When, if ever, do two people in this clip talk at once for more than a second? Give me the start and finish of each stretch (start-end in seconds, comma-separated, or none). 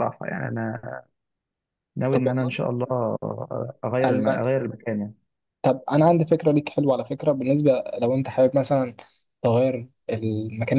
none